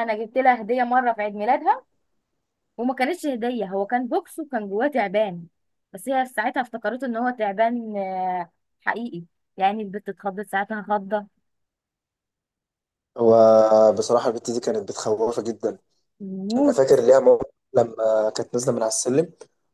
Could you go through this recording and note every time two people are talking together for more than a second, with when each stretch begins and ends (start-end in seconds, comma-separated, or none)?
none